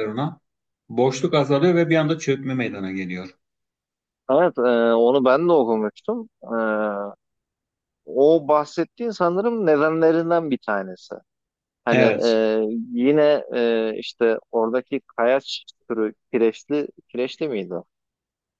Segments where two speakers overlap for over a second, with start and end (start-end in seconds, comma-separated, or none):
none